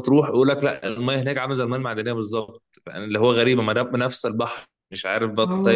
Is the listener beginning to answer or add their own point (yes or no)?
yes